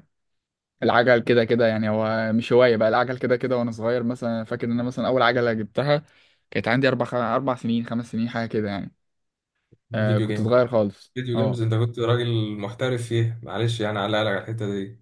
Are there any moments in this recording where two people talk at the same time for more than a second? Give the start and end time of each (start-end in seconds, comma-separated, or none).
none